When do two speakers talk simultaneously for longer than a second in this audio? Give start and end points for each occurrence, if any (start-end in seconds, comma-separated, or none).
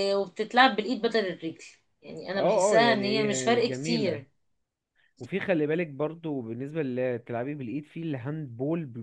2.3-4.2